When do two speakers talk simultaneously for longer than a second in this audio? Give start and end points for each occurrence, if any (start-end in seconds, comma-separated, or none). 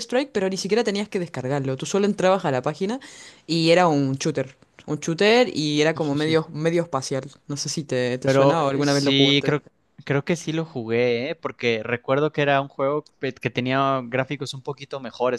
8.2-9.6